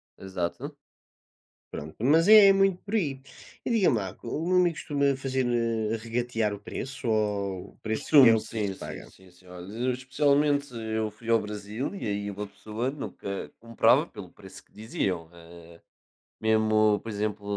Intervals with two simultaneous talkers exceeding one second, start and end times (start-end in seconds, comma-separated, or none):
7.9-9.1